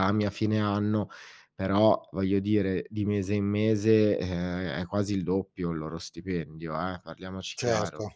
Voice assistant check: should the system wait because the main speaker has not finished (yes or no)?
no